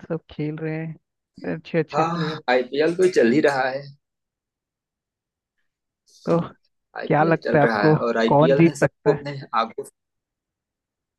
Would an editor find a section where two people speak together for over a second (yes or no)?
yes